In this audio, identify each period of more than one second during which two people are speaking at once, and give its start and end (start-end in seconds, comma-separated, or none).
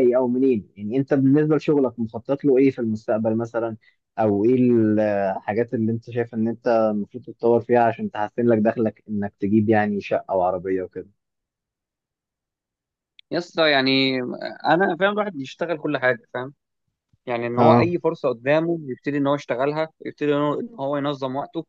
none